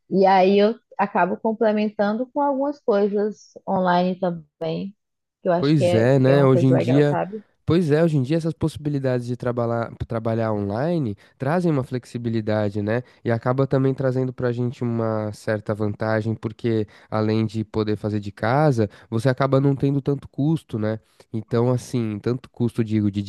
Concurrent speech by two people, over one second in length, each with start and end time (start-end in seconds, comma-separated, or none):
5.6-7.2